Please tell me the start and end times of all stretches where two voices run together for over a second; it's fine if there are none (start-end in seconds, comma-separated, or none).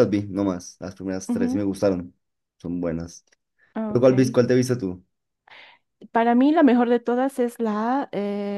none